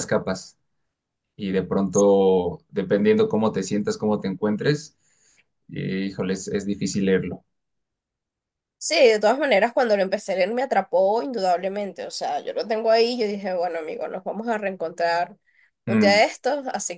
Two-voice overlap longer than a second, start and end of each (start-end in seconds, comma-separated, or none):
none